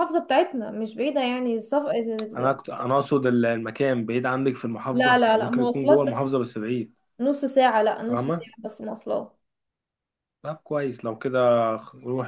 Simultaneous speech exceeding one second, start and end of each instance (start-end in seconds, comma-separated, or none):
4.9-6.3